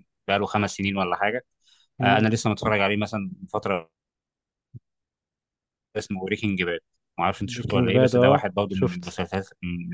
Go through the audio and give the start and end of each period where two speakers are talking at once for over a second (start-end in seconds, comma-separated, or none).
7.5-9.2